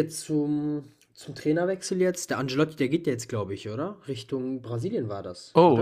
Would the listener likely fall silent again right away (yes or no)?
no